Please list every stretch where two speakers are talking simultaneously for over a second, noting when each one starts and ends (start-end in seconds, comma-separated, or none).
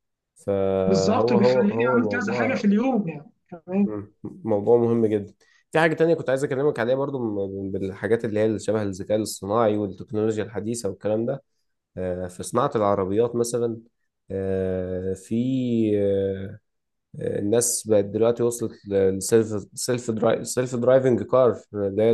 0.9-2.7